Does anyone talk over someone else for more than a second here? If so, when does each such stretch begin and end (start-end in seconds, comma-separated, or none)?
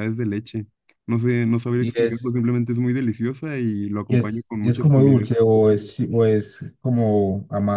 4.1-5.3